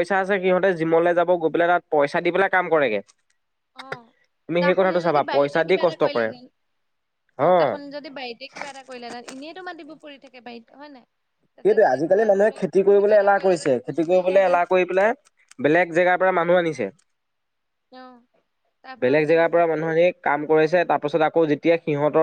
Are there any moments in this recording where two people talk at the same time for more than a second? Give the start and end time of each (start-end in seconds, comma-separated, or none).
4.6-6.3, 11.7-14.6